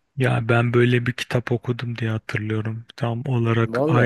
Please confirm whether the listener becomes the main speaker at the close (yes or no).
no